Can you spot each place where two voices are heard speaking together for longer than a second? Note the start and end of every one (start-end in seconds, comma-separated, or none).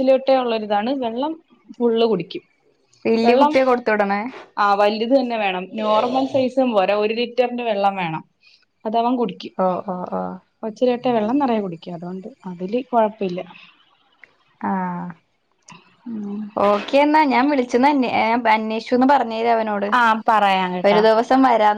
none